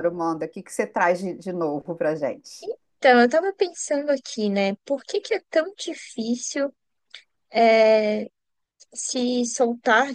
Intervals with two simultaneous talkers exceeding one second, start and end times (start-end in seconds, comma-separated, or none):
none